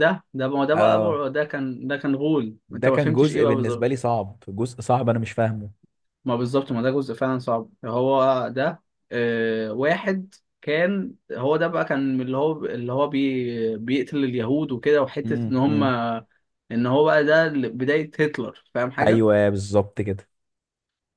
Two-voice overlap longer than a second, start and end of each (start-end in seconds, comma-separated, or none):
2.7-4.0